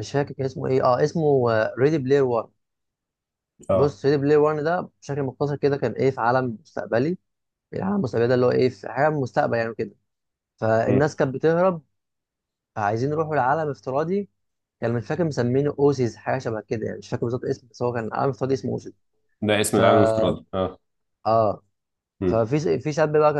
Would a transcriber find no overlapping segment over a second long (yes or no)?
yes